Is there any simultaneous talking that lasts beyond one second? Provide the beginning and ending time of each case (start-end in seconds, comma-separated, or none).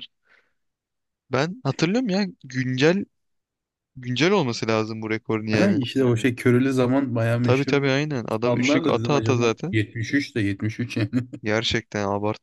8.4-9.8